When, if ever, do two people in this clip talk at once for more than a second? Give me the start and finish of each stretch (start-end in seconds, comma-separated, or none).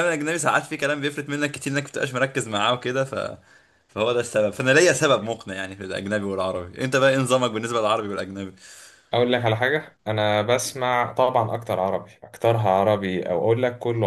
none